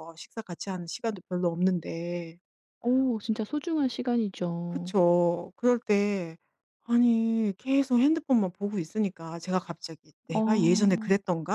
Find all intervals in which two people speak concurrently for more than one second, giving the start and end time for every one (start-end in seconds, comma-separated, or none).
none